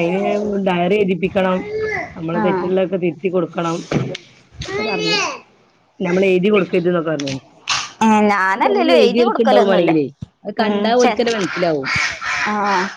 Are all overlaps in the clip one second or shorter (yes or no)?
no